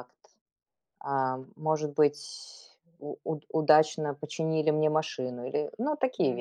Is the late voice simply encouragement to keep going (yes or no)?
no